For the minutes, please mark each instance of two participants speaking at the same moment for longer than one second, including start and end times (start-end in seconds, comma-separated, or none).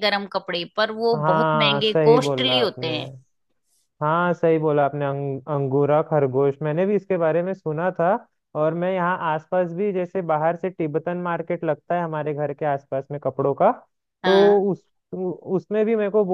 1.1-2.9